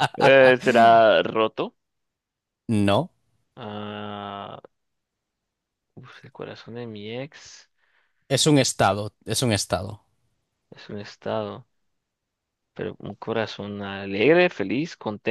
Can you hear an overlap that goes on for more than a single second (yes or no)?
no